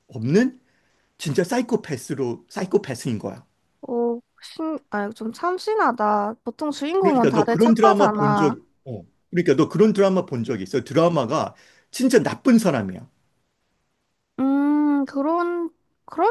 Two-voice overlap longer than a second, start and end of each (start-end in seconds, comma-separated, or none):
7.0-8.6